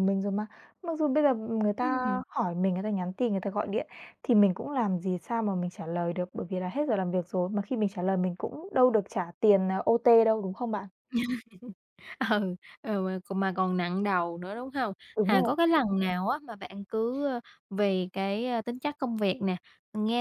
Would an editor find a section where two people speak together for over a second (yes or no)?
no